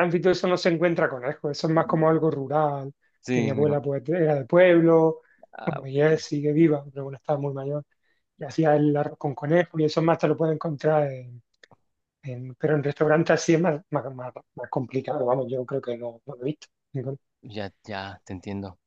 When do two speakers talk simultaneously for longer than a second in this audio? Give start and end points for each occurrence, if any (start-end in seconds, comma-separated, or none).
none